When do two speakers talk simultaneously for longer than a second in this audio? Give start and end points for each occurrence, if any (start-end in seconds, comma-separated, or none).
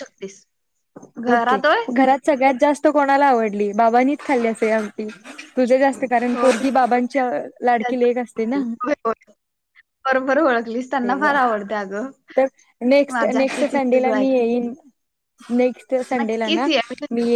13.1-14.7